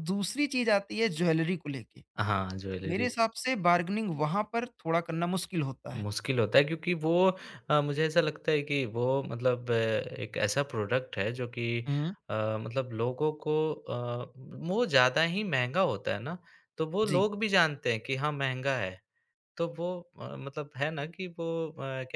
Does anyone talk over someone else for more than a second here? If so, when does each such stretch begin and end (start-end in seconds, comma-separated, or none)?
none